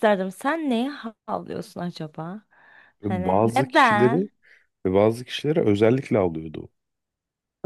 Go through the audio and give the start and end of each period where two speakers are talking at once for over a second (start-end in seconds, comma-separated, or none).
3.0-4.3